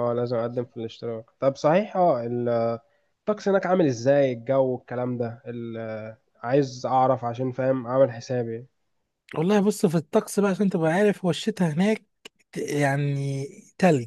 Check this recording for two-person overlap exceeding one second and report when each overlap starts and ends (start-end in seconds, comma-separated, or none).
none